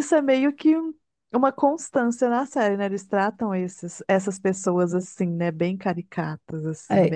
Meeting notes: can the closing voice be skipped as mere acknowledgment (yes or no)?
no